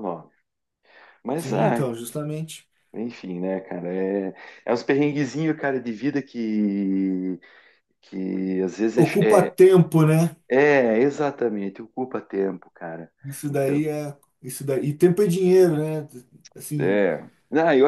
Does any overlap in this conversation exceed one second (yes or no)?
no